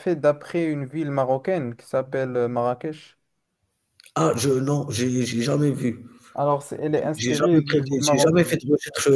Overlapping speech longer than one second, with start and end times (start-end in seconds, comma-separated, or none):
6.9-8.6